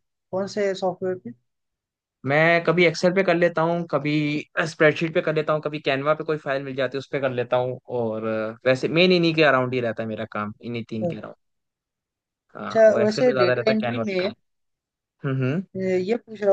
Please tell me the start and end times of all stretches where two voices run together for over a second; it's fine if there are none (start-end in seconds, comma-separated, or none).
12.7-14.3